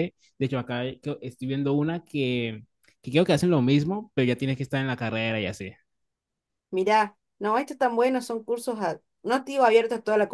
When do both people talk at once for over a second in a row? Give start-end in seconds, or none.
none